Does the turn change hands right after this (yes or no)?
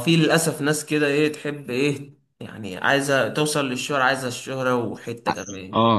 yes